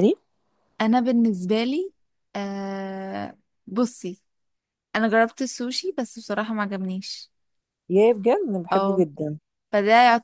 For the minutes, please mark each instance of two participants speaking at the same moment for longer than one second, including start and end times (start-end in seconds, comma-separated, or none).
none